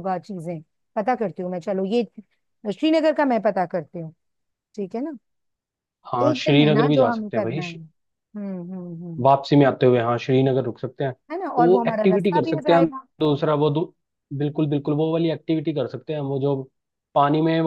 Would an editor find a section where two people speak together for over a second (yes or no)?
yes